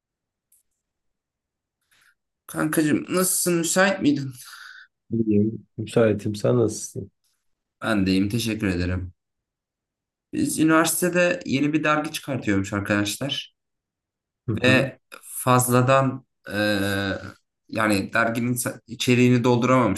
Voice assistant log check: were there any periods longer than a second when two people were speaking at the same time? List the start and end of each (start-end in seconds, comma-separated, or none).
none